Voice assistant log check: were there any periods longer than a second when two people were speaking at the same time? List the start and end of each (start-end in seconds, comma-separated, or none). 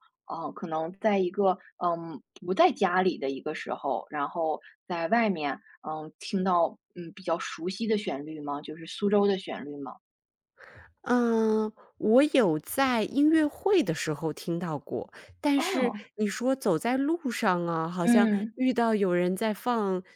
none